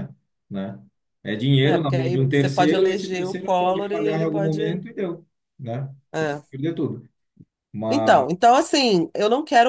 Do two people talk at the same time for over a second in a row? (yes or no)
yes